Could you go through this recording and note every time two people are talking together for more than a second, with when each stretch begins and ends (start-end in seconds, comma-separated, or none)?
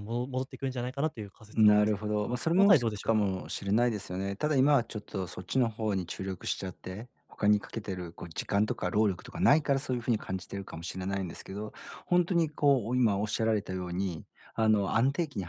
1.5-3.3